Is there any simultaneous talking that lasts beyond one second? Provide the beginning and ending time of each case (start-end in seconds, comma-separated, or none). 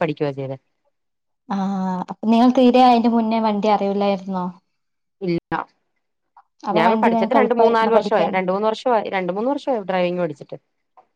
6.8-8.4